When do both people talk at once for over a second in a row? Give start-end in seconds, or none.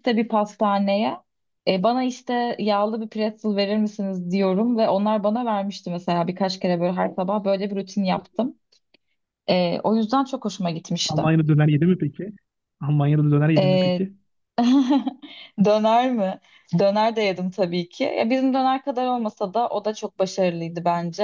none